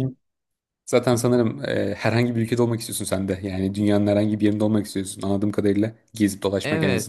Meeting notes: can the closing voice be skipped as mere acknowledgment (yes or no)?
no